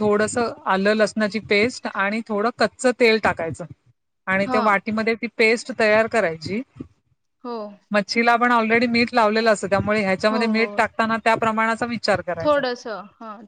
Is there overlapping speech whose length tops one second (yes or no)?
no